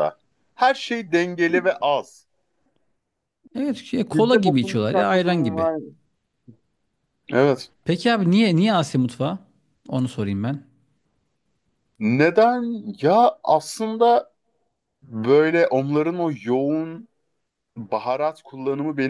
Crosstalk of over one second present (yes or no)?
yes